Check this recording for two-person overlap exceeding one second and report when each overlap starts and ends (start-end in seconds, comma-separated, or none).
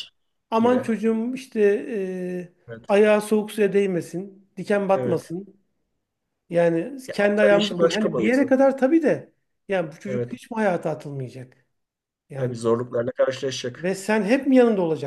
7.1-8.5